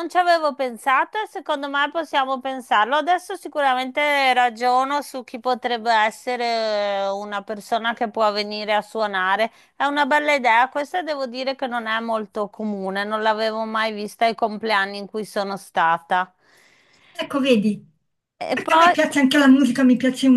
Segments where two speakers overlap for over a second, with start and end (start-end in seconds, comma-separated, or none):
none